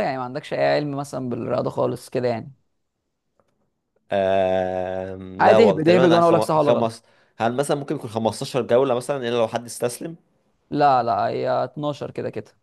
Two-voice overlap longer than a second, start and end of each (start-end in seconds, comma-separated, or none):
5.4-6.9